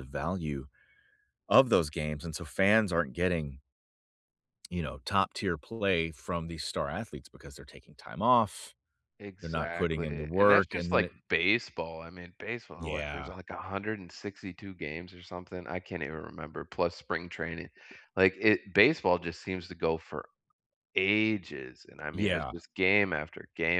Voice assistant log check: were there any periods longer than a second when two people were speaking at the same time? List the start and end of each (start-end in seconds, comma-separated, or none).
9.4-11.2